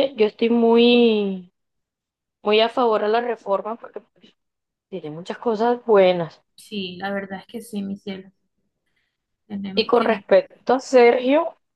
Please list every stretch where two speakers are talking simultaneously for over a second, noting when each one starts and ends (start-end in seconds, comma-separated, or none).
none